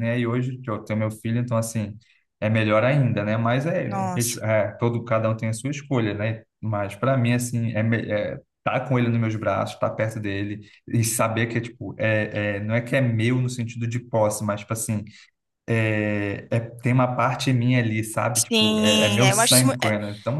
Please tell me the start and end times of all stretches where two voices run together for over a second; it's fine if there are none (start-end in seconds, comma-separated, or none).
18.3-19.8